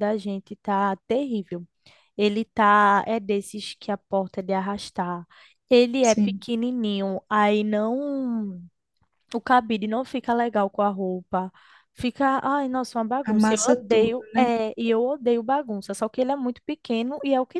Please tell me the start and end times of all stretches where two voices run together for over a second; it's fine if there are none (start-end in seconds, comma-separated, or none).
13.2-14.5